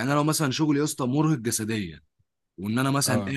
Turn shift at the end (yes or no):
no